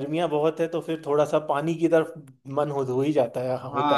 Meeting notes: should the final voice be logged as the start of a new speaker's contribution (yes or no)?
yes